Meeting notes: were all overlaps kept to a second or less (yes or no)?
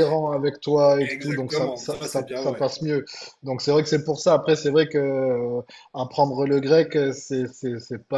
no